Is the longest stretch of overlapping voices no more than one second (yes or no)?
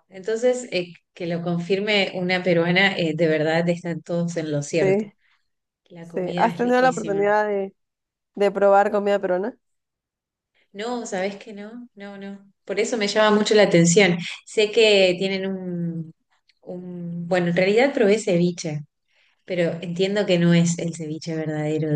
no